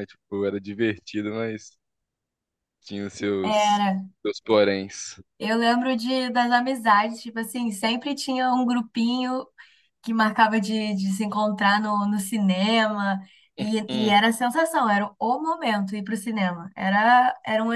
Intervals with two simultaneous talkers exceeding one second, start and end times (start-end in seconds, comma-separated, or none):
none